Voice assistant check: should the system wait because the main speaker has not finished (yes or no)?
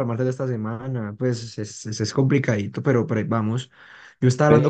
yes